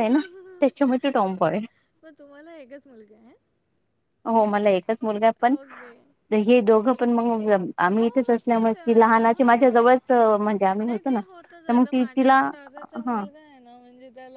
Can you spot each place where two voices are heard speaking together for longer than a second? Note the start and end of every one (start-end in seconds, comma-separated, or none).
8.0-9.8, 10.9-12.4